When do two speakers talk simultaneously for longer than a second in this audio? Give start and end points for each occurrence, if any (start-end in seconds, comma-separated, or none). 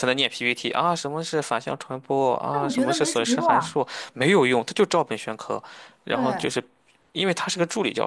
2.5-3.8